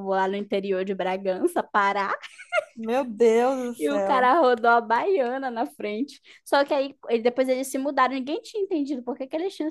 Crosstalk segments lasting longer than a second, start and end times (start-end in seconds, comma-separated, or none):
none